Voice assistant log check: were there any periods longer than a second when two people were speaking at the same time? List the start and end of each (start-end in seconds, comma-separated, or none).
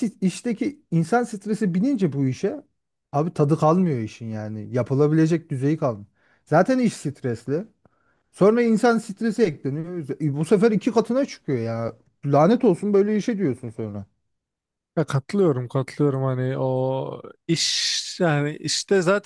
none